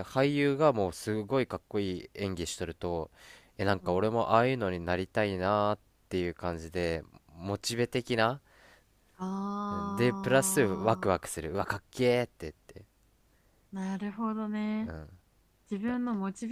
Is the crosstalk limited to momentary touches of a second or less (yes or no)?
no